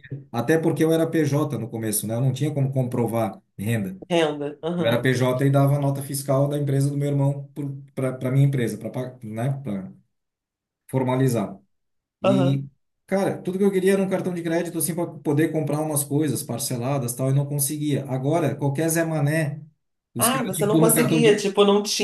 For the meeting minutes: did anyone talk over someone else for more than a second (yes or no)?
yes